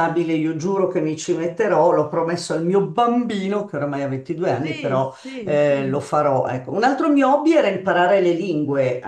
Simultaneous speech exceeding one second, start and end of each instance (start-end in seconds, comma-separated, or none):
4.6-6.1